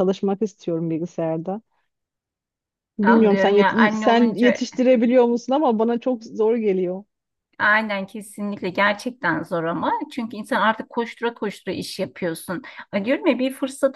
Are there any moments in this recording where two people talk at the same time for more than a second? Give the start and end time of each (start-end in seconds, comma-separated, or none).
3.0-4.7